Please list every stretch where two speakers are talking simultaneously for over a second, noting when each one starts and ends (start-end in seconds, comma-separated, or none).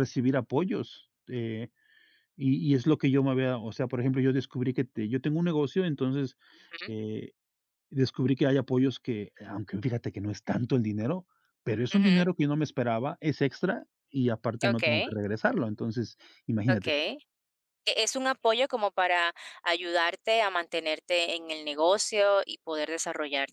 none